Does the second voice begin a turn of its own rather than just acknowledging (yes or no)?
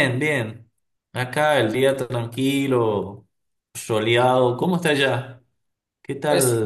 yes